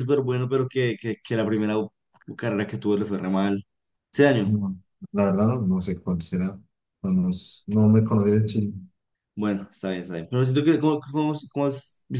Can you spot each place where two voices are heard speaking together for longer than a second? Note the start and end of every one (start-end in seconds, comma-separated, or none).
none